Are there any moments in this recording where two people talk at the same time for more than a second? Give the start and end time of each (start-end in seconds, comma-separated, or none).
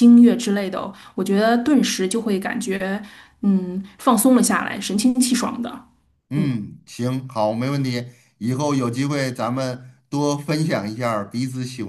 none